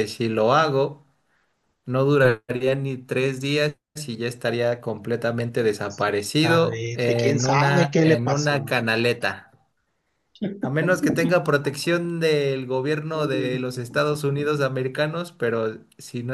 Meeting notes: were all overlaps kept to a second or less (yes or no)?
no